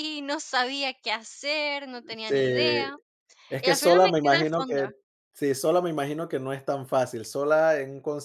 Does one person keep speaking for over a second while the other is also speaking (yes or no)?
yes